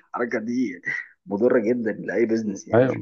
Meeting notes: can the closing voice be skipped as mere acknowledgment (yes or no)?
yes